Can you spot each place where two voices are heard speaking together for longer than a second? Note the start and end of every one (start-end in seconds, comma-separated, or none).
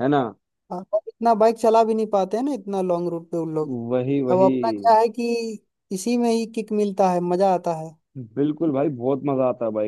none